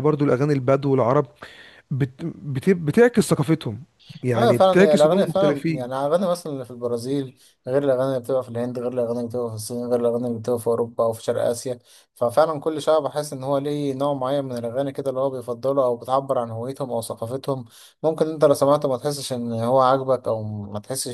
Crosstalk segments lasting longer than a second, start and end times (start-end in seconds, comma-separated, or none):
4.3-5.9